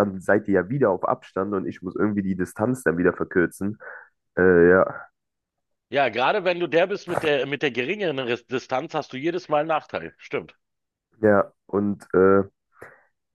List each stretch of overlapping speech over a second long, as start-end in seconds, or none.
none